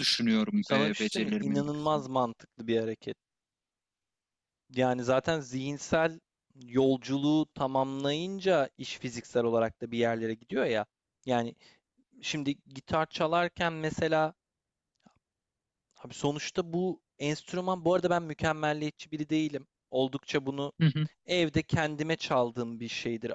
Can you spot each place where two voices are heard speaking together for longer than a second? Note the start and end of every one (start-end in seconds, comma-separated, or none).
0.6-2.0